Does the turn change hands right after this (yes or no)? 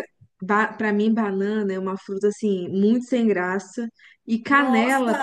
no